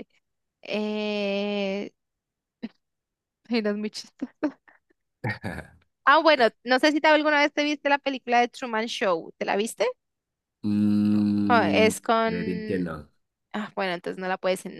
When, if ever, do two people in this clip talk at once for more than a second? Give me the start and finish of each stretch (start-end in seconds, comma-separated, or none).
11.5-12.9